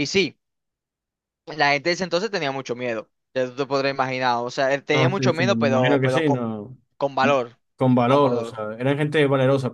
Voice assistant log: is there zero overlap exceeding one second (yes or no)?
no